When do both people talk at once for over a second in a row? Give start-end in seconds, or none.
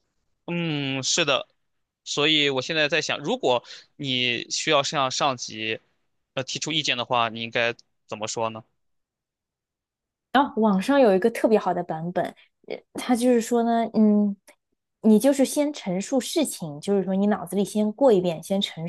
none